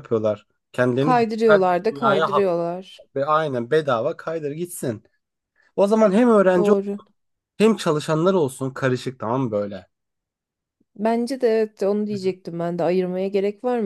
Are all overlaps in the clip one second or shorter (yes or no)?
no